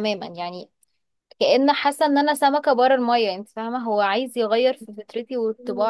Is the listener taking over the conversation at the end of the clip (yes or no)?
yes